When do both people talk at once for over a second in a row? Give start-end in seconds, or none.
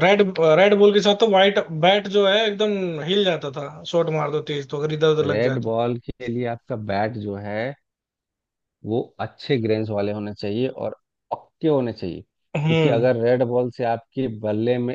none